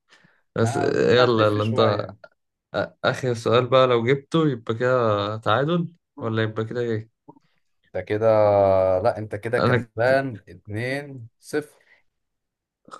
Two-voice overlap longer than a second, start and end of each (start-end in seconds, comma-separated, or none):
0.6-2.0